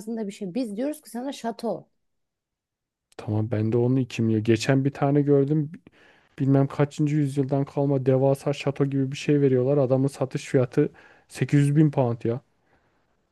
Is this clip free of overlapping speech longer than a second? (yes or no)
yes